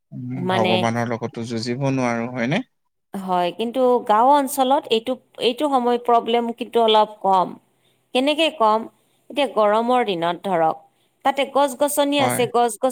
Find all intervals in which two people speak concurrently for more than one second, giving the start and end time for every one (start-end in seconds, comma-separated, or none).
none